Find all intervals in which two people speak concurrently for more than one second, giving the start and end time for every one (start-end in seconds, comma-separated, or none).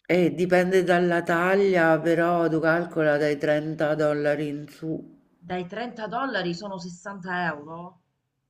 none